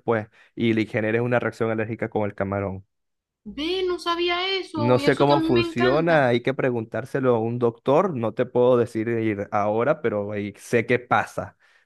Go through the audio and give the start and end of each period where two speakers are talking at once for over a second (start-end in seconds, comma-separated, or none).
4.7-6.3